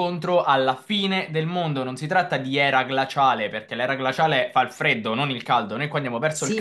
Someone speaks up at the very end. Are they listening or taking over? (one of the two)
taking over